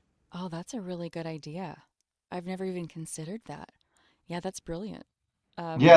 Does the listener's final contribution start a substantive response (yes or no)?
yes